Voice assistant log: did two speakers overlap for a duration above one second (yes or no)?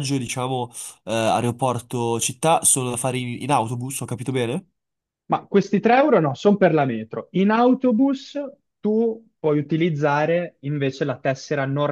no